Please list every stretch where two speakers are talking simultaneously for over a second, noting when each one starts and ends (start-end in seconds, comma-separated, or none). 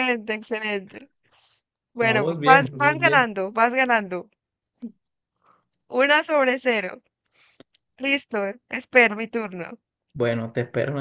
2.0-3.3